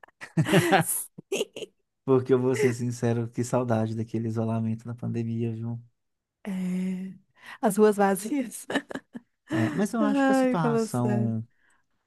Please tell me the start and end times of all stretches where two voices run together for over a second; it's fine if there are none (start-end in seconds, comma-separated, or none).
10.0-11.3